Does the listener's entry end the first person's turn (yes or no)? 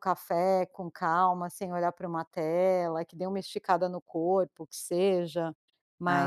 no